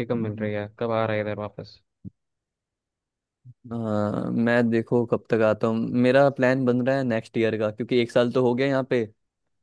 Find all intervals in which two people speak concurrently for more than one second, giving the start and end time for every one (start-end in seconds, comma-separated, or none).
none